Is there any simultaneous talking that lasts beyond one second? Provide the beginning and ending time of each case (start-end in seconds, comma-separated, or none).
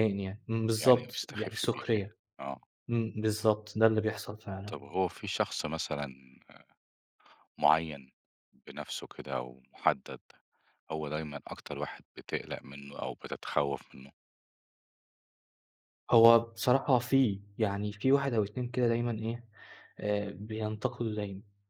0.8-2.2